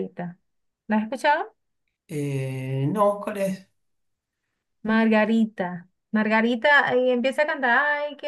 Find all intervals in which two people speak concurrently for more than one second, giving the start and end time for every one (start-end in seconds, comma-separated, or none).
none